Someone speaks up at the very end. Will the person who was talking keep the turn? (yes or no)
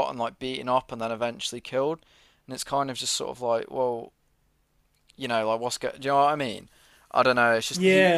no